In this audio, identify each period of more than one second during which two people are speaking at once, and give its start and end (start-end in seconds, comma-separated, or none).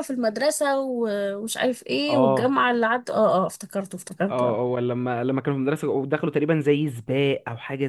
none